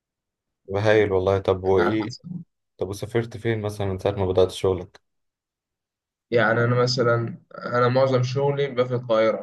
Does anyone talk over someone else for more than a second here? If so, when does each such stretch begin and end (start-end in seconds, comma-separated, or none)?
none